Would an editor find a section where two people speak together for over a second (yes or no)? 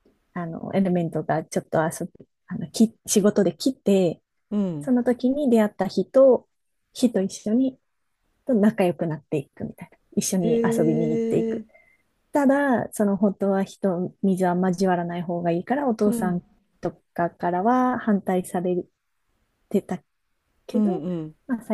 no